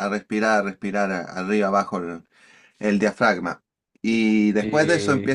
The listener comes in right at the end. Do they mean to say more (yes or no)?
no